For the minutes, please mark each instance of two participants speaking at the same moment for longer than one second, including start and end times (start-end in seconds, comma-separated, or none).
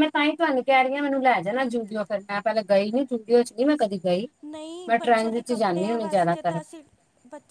4.9-6.5